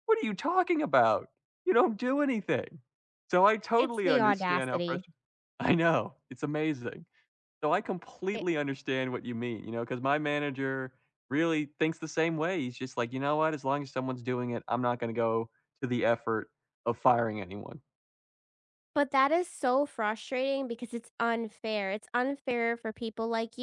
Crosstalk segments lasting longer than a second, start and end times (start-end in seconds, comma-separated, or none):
3.8-5.0